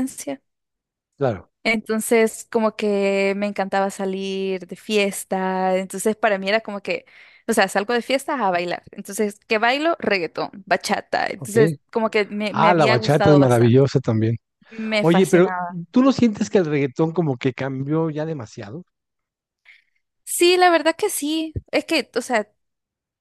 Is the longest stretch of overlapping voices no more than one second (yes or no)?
no